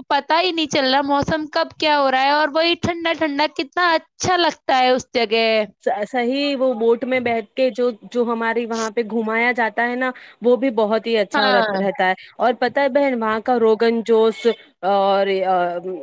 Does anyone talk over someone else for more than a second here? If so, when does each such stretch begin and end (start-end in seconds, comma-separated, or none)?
none